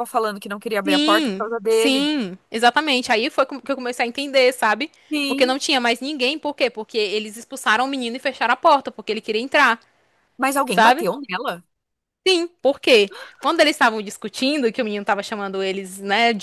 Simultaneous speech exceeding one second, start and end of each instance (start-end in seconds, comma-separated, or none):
0.8-2.1